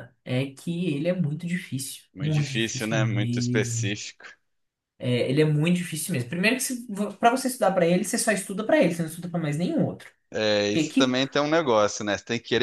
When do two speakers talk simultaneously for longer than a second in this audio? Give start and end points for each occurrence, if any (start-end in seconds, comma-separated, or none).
2.1-3.9